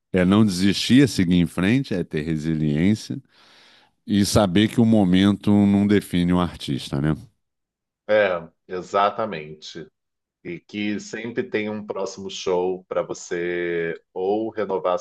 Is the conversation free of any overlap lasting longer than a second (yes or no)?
yes